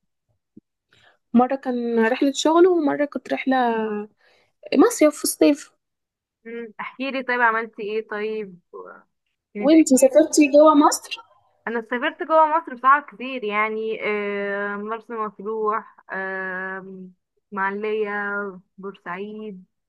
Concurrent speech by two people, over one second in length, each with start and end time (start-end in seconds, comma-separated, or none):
none